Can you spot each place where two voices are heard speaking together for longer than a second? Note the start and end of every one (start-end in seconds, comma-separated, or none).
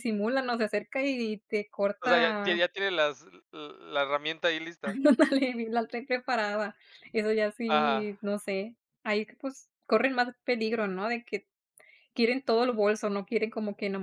none